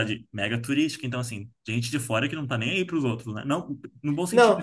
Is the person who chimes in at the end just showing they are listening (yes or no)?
no